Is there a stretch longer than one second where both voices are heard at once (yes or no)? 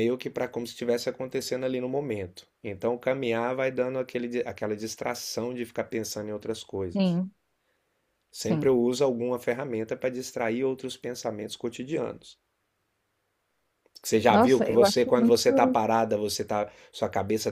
yes